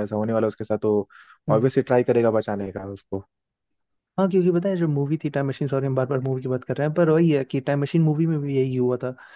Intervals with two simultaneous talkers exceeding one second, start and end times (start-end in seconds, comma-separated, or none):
none